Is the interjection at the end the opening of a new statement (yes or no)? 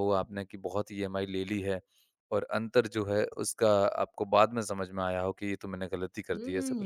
yes